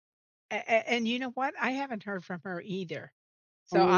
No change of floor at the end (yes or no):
yes